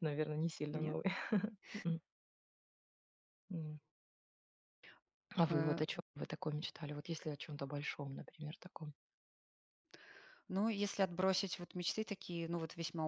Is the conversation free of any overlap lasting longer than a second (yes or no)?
yes